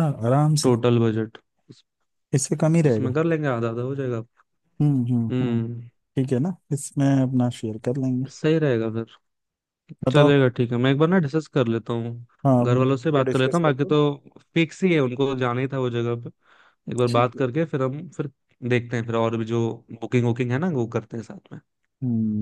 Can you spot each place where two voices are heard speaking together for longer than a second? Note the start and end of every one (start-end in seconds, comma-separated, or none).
12.7-13.9